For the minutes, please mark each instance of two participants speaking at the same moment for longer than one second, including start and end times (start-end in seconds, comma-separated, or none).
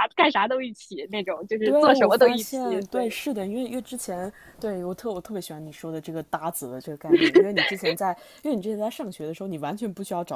1.6-3.1